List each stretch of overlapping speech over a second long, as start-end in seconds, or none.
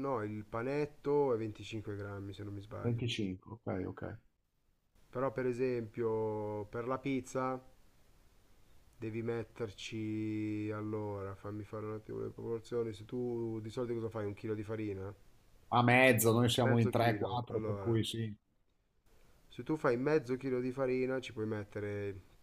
16.6-18.0